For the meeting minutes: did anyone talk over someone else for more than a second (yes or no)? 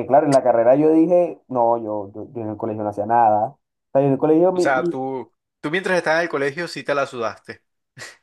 no